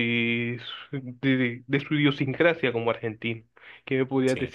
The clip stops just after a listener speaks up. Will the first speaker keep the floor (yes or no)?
yes